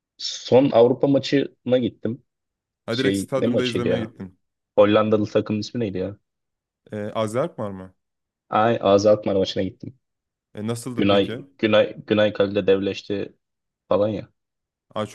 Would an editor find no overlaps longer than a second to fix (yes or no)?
no